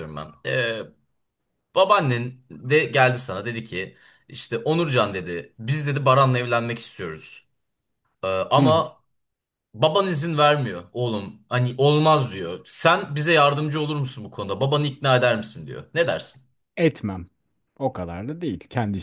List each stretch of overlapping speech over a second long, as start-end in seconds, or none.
none